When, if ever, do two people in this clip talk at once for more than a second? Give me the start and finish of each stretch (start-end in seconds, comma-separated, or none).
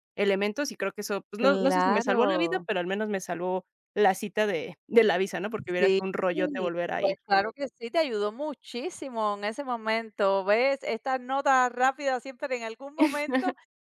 1.4-2.7